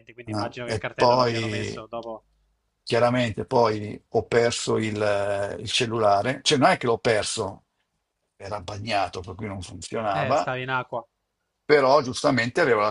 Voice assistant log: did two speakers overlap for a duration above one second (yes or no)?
yes